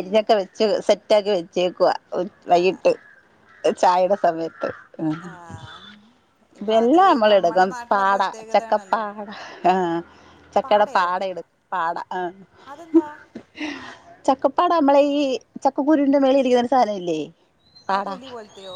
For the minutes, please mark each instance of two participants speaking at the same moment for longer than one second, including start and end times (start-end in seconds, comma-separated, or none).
6.7-9.0